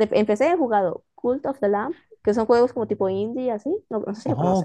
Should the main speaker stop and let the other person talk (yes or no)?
yes